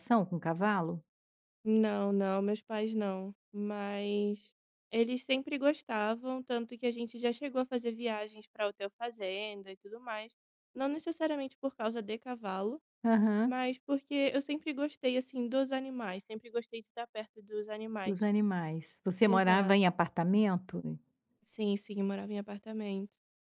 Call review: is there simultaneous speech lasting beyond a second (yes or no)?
no